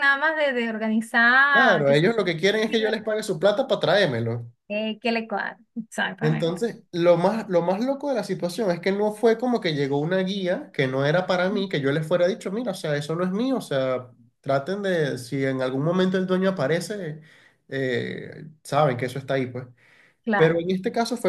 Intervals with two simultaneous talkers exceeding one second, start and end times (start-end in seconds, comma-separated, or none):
none